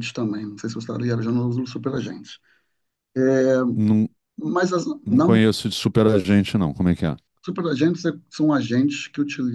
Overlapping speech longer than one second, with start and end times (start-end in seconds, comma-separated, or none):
none